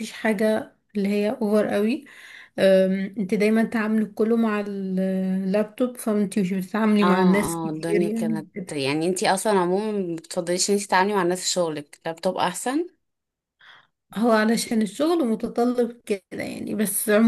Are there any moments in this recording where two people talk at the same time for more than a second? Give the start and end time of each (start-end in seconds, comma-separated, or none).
7.0-8.4